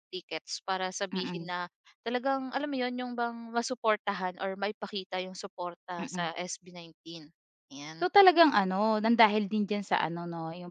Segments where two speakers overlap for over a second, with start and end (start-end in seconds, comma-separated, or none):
none